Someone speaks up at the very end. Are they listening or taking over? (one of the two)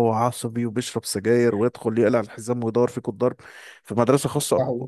listening